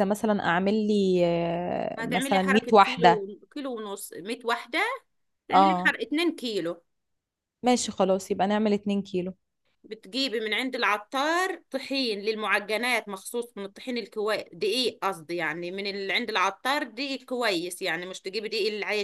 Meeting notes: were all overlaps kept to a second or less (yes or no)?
no